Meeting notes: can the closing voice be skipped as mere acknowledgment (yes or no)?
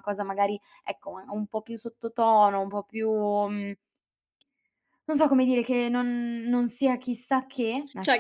no